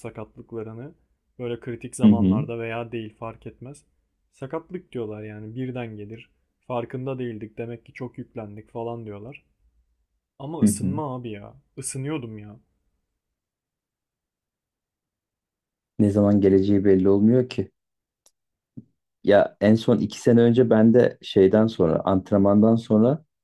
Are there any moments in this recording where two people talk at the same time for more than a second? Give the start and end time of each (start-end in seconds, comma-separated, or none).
none